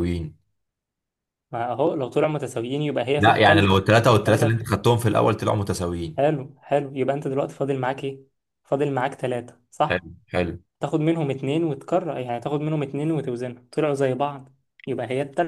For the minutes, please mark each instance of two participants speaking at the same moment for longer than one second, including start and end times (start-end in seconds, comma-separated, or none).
3.2-4.7